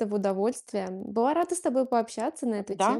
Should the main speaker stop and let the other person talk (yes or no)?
yes